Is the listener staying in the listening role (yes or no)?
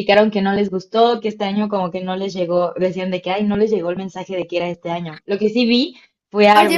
no